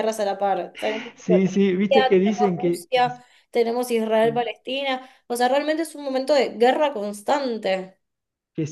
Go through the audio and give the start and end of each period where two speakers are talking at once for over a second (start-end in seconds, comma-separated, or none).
1.1-3.1